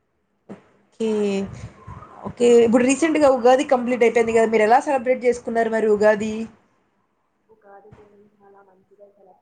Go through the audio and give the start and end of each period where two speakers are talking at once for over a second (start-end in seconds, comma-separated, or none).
none